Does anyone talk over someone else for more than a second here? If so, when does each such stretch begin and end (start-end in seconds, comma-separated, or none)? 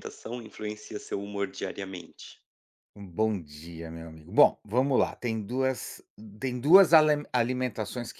none